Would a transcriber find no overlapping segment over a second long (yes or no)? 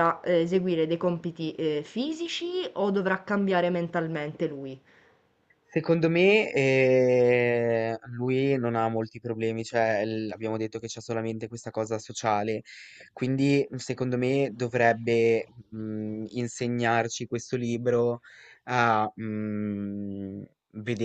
yes